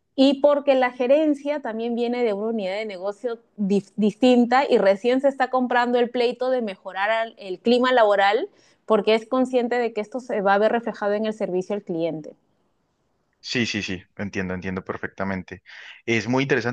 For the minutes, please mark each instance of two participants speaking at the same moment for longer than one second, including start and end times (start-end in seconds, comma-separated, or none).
none